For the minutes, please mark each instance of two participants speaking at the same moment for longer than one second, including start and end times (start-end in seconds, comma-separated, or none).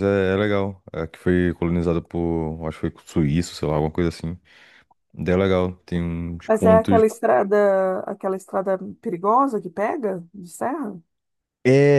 none